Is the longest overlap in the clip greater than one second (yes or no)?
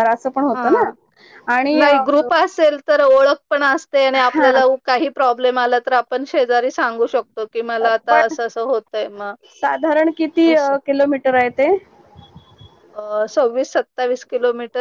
no